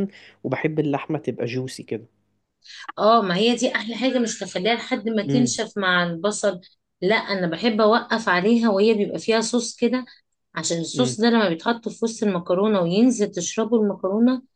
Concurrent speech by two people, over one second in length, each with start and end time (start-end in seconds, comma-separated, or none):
none